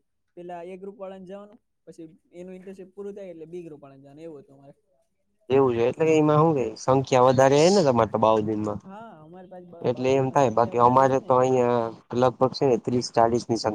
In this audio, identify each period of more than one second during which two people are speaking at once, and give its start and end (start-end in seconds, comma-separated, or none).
9.9-11.5